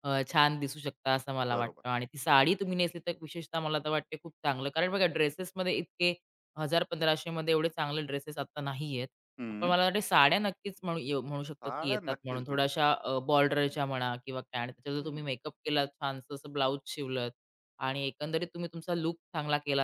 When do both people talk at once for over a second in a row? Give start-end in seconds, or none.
11.6-12.9